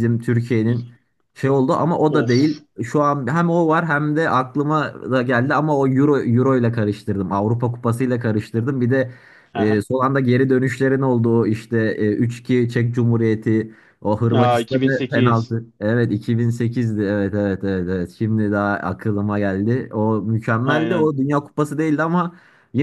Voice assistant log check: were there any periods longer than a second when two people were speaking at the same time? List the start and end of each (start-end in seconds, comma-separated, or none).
14.3-15.6